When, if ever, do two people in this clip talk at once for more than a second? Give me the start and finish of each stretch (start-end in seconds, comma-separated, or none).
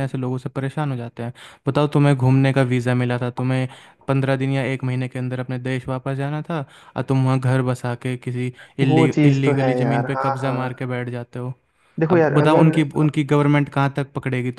8.9-10.6